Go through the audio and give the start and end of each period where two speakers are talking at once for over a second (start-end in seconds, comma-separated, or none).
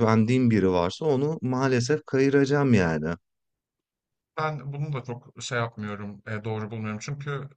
none